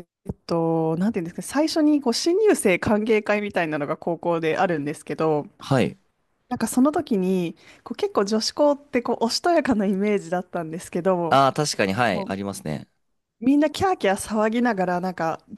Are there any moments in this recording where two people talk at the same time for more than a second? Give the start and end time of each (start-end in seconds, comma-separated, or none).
none